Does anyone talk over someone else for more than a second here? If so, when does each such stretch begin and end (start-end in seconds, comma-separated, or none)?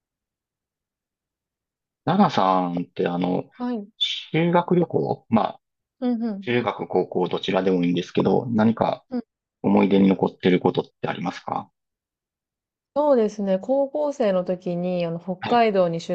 none